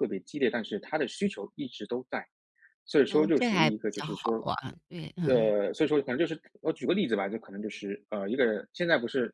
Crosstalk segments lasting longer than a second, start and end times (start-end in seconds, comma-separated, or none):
3.1-4.3